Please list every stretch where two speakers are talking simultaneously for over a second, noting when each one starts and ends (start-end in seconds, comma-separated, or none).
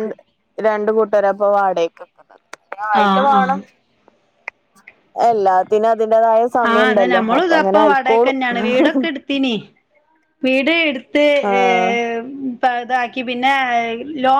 none